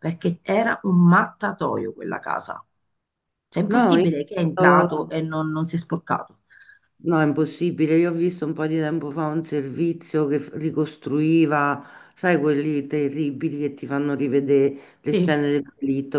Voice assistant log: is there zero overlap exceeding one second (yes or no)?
no